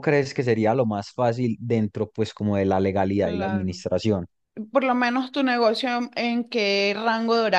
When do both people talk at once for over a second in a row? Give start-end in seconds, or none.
none